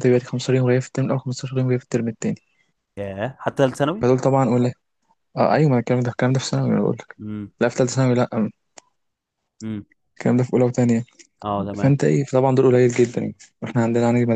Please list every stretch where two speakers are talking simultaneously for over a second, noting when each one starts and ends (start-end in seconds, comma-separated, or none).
none